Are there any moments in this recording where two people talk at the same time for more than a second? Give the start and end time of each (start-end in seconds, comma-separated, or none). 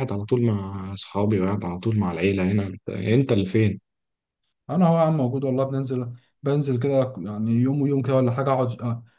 none